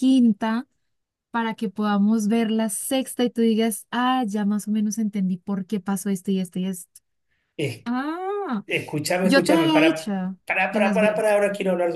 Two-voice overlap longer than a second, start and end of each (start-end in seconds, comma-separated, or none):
9.2-11.4